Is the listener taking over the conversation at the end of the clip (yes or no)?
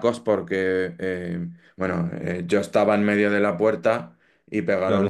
no